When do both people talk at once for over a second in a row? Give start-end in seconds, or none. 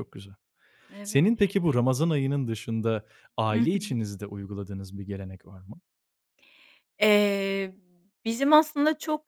none